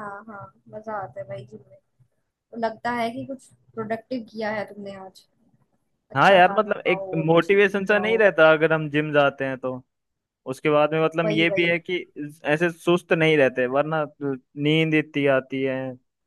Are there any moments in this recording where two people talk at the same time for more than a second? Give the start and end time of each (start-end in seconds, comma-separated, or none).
6.2-8.2